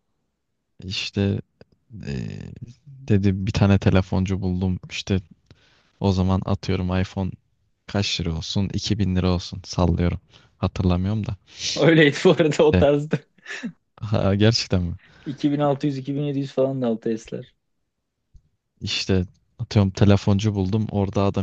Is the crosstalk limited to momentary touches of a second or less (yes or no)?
yes